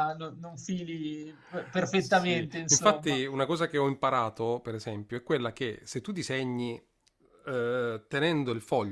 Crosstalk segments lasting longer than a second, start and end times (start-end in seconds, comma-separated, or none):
2.0-3.2